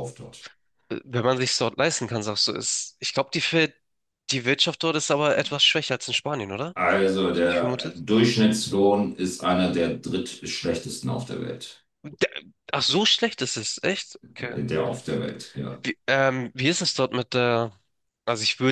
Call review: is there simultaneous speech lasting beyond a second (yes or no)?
no